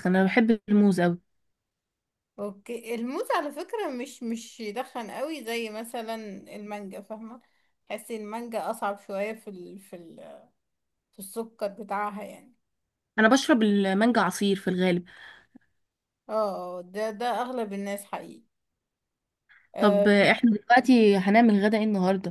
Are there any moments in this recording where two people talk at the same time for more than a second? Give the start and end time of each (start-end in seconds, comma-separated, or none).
none